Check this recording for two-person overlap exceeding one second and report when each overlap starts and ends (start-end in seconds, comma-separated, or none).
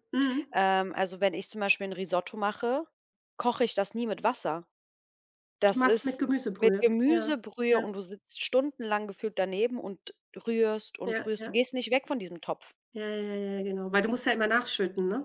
5.7-7.8